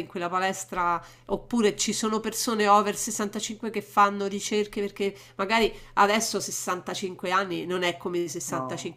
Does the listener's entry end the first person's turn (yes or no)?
no